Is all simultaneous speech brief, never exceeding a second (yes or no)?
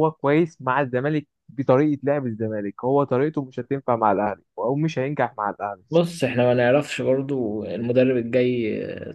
yes